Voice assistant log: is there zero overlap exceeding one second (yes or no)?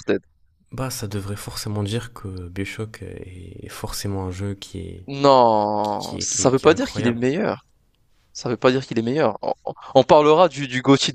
no